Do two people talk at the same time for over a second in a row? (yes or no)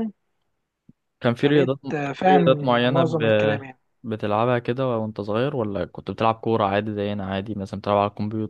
yes